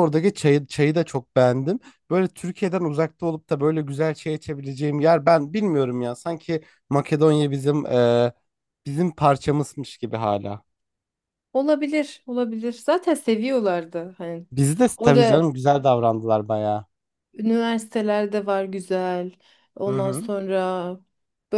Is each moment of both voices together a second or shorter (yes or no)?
yes